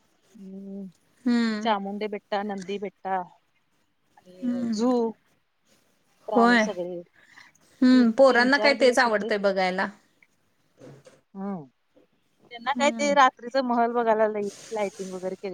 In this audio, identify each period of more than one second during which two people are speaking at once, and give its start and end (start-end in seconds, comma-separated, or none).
7.9-9.3